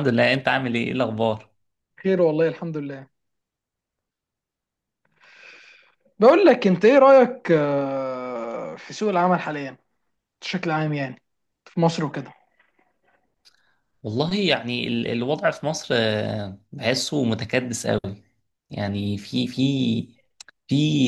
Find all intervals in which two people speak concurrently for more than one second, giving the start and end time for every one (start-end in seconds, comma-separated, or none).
none